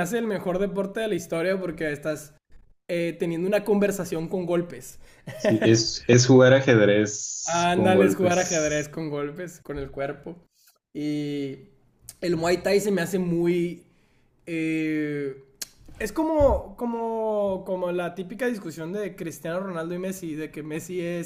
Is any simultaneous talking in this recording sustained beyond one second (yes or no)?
yes